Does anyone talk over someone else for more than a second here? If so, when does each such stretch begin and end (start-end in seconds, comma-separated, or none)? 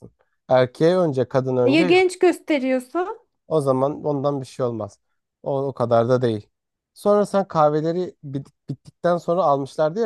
none